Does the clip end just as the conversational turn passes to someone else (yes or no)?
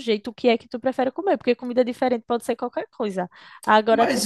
no